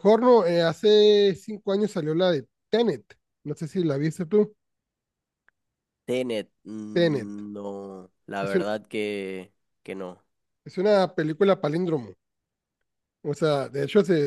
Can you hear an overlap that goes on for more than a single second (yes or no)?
no